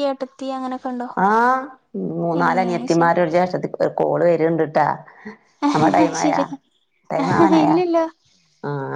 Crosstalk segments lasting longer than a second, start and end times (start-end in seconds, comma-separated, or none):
none